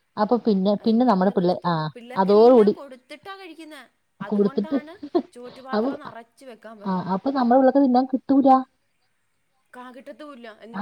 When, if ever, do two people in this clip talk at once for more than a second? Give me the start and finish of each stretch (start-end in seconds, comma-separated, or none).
0.9-2.7